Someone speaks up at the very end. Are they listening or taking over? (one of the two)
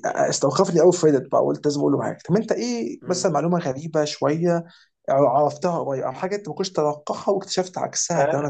taking over